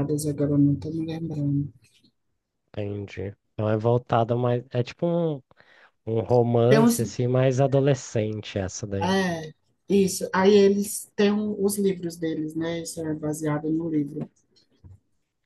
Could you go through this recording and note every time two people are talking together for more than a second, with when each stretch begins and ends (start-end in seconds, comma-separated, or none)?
none